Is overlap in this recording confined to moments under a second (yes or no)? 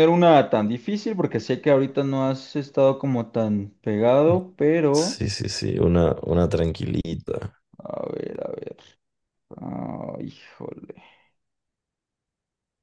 yes